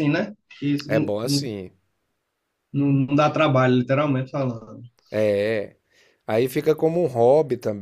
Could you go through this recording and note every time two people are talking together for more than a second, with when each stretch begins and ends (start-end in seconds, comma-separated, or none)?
none